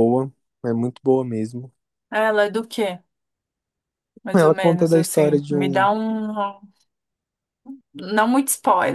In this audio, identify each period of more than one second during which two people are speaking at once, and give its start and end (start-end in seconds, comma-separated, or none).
4.3-5.9